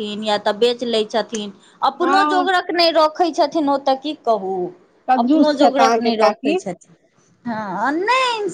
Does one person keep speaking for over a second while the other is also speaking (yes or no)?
yes